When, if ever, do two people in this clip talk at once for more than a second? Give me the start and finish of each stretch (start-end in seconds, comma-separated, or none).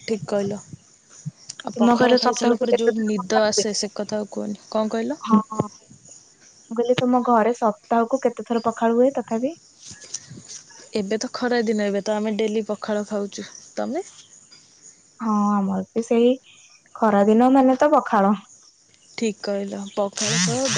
1.8-3.6